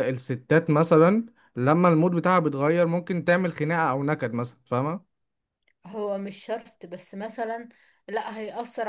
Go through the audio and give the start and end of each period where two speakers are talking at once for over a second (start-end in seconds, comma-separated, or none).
none